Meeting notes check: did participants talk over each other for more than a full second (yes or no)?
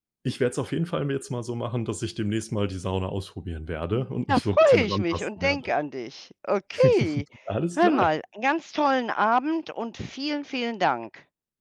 yes